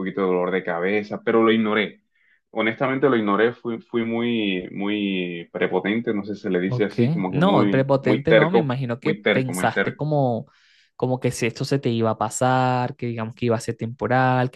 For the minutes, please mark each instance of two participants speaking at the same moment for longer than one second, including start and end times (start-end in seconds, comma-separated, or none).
6.7-10.0